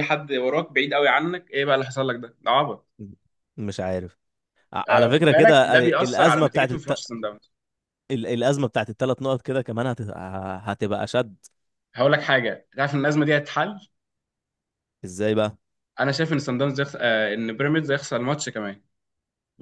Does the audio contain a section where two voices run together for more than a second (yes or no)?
yes